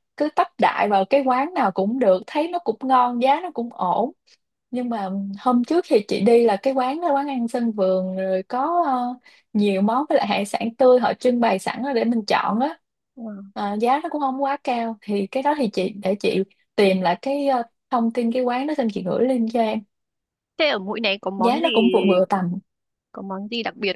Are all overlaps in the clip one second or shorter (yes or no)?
yes